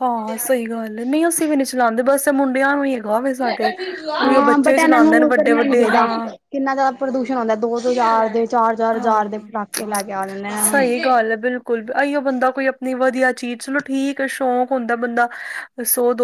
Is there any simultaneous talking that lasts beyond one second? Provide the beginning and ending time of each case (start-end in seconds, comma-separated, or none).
4.2-6.1